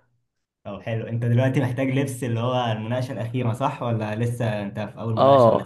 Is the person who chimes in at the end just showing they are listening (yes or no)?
no